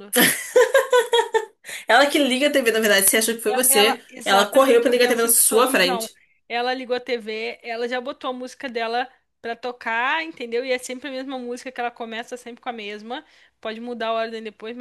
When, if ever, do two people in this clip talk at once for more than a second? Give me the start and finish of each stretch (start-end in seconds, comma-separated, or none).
3.5-6.1